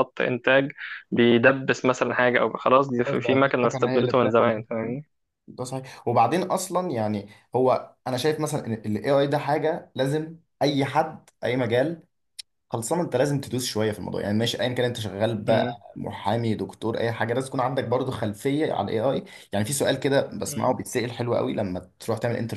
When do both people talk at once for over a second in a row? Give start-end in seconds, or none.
3.0-4.6